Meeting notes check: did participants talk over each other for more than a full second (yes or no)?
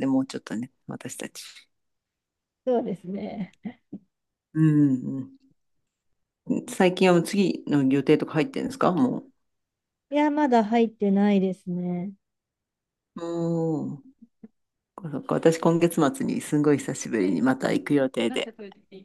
no